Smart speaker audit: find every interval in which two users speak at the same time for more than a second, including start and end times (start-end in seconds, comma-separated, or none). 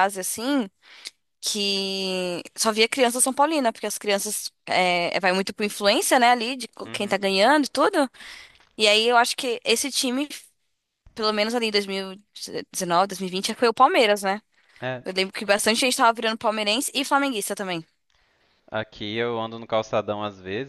none